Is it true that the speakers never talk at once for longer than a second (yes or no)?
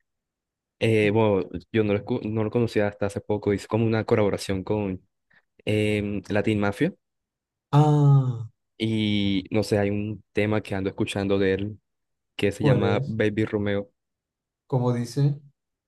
yes